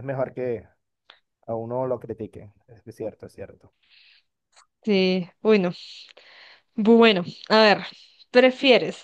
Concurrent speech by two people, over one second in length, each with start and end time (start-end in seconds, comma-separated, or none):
none